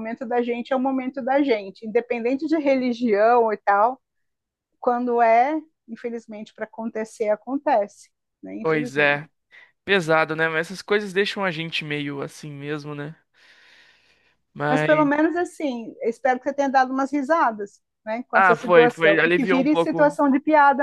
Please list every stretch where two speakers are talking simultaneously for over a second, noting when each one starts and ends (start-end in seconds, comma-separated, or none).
18.3-20.1